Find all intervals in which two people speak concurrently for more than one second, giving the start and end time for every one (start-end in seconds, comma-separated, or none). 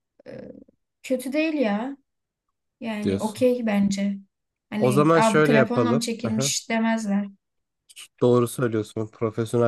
4.8-6.0